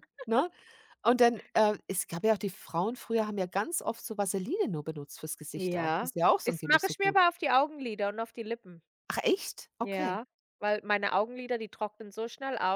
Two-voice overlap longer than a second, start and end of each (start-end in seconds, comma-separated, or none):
5.6-7.2